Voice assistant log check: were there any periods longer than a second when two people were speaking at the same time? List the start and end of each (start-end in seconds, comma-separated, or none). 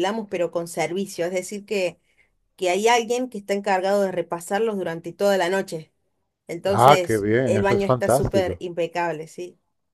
6.7-8.6